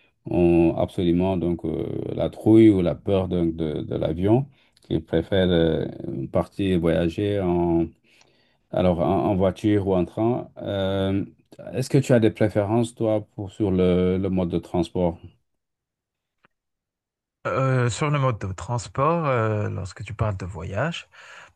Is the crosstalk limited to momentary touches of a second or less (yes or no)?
yes